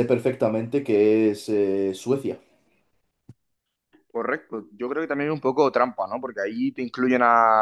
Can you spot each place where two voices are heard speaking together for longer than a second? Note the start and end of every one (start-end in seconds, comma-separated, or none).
none